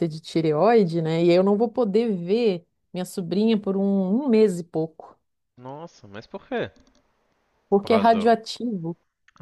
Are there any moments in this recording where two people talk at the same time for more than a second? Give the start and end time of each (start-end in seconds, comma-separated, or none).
none